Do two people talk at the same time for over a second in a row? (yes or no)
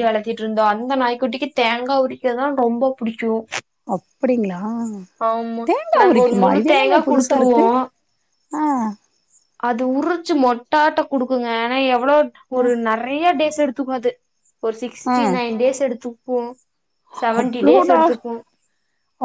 yes